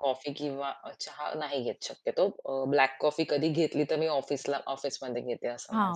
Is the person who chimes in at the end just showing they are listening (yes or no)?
no